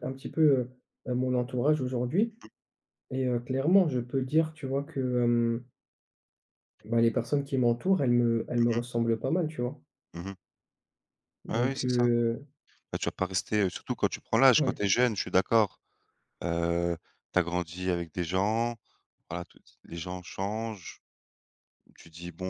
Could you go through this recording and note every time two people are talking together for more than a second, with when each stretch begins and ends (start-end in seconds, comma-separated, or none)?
none